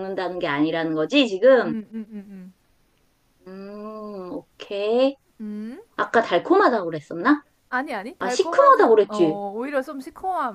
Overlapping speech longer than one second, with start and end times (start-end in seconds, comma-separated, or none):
8.2-9.4